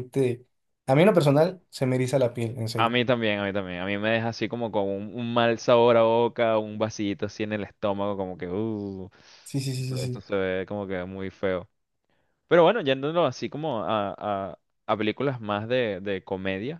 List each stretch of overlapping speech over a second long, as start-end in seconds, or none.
none